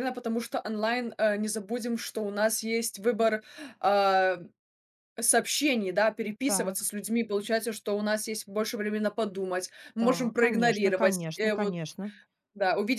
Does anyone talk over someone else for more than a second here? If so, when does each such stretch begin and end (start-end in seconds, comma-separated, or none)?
10.0-11.8